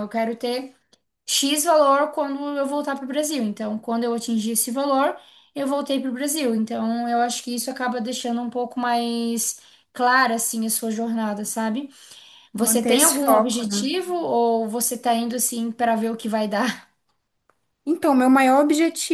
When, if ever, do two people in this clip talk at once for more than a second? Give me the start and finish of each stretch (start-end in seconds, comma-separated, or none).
12.6-13.8